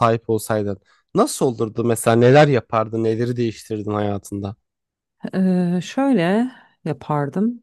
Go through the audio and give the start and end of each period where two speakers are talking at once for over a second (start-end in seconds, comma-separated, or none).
none